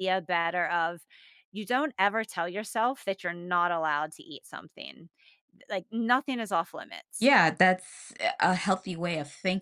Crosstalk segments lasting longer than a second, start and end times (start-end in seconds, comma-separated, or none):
none